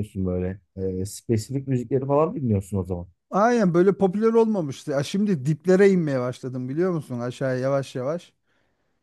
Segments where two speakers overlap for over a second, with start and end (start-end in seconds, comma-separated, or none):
none